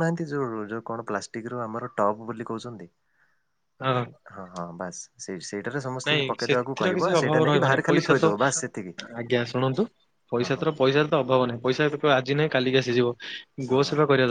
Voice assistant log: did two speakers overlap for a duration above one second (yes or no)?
yes